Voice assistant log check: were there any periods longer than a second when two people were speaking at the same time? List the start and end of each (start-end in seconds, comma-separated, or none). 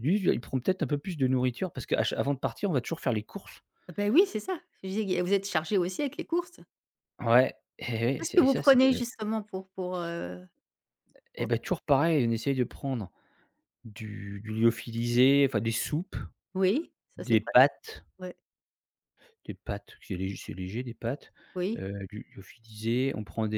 none